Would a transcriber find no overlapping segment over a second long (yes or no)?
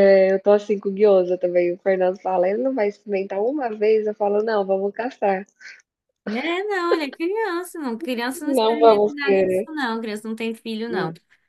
no